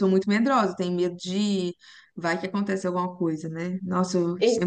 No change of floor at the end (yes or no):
yes